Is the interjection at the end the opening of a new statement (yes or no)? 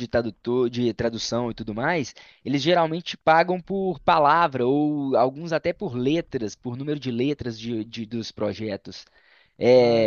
no